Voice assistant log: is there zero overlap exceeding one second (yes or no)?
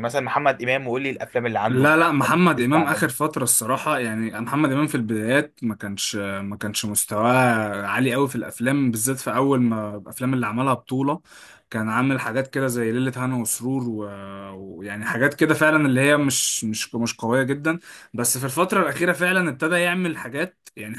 yes